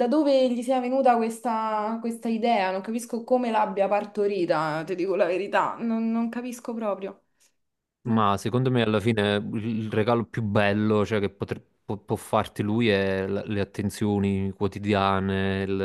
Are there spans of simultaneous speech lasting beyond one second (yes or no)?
no